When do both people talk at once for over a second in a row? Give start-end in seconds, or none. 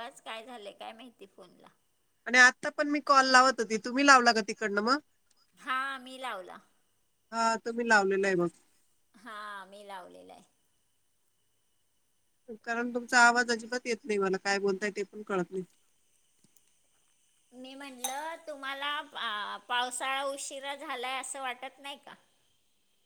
none